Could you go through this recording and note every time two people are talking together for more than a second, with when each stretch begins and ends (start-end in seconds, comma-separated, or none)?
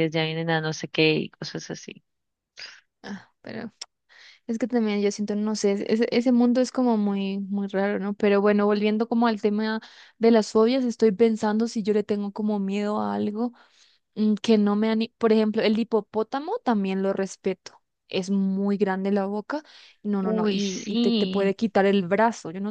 20.2-21.5